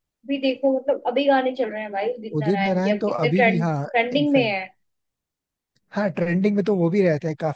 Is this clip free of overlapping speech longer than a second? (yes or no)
no